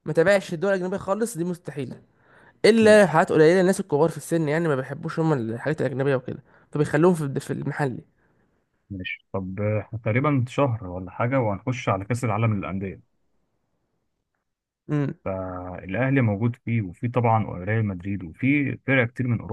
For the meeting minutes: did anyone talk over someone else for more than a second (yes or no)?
no